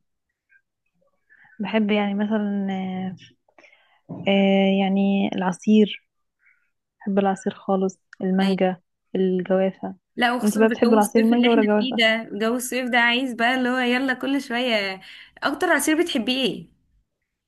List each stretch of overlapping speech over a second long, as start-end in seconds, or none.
10.4-12.0